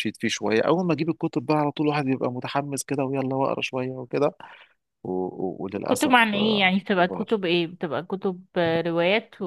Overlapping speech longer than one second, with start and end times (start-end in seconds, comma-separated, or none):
5.9-7.4